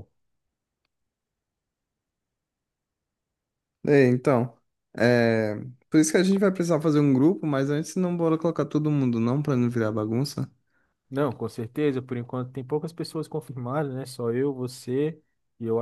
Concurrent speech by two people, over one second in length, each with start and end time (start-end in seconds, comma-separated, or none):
none